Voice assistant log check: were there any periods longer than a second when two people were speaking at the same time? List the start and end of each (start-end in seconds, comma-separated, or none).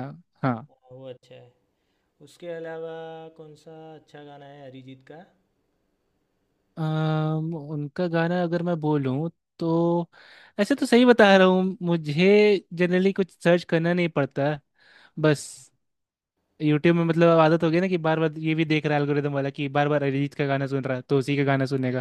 none